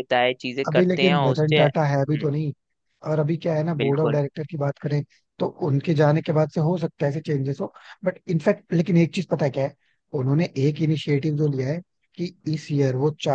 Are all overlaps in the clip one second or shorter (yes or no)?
no